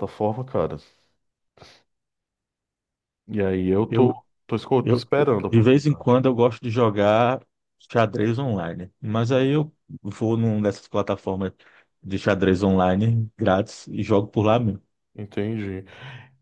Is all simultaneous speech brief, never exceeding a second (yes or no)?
no